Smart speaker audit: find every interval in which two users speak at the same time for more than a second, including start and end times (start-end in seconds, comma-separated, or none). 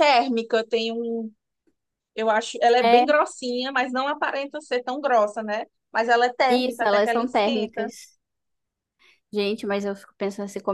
6.5-7.9